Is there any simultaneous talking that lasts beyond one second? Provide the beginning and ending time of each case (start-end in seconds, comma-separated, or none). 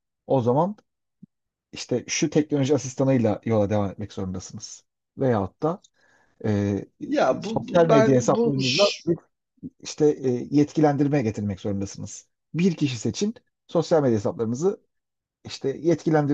7.4-9.0